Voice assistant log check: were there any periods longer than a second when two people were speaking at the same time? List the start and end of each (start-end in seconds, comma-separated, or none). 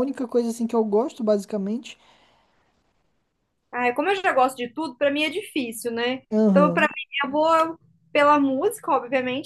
none